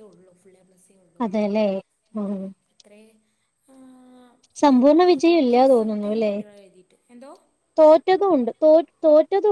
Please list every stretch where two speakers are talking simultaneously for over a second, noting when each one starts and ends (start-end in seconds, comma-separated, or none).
4.7-6.3